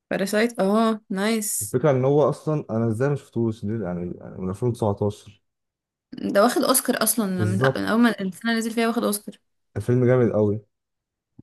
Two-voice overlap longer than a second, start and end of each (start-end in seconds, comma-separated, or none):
none